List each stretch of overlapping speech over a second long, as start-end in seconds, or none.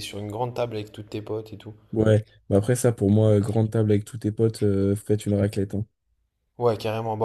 none